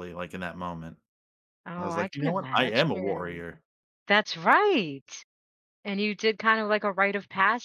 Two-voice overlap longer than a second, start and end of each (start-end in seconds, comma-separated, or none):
1.8-3.4